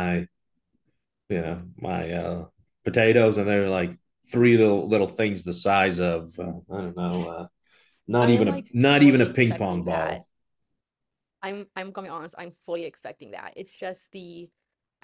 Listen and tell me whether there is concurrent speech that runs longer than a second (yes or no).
yes